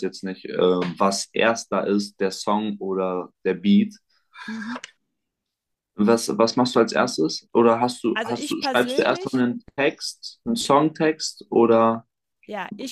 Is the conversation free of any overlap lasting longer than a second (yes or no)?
no